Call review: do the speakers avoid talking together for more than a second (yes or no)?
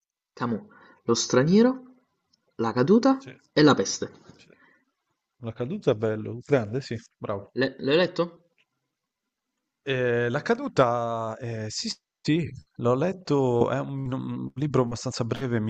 yes